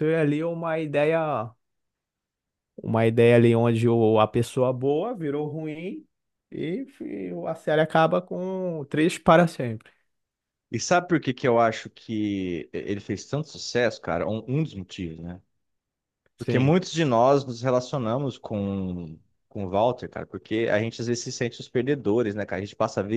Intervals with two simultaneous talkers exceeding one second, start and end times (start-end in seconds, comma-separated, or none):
none